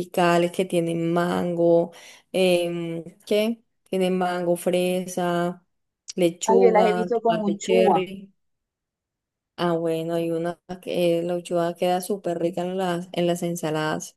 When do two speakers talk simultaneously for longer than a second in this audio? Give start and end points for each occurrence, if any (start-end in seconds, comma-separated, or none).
6.5-8.1